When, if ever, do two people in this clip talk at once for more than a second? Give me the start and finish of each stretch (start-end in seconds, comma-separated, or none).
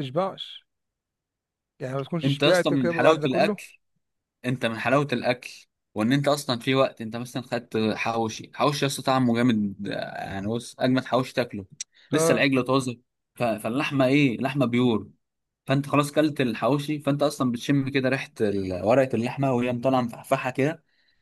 2.2-3.6